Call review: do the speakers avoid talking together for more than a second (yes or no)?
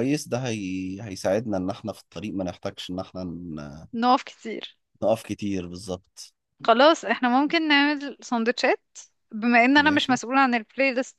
yes